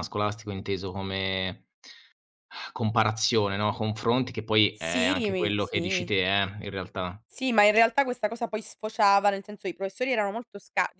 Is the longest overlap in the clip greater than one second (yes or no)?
yes